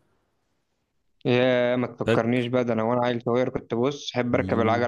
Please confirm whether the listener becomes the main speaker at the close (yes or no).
yes